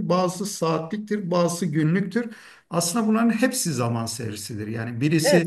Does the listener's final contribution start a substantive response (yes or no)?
no